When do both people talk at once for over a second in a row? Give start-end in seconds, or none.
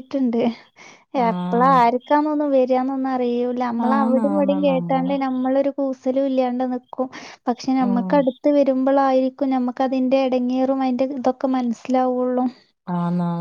3.9-5.1